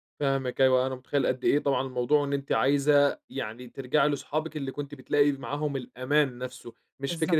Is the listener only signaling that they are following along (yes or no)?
yes